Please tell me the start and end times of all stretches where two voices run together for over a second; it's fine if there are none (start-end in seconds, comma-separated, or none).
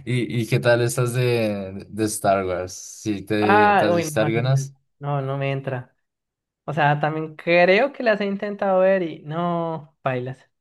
3.4-4.7